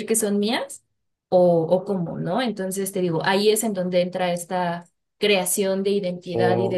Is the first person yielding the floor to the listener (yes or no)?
no